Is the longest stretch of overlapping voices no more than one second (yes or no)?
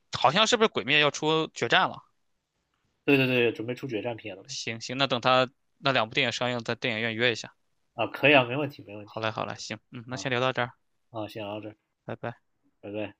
yes